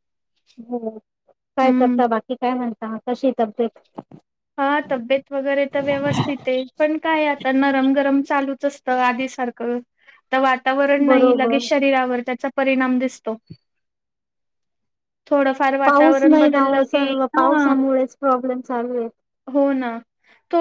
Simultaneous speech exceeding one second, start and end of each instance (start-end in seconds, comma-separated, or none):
15.9-17.7